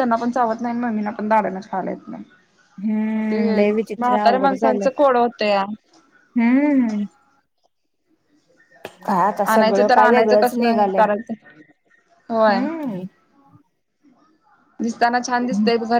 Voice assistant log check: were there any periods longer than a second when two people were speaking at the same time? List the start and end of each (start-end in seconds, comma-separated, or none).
3.3-4.9, 9.5-11.0